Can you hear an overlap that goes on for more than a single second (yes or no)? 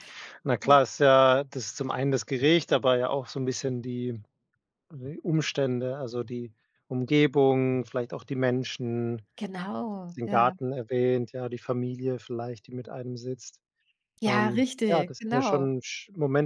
yes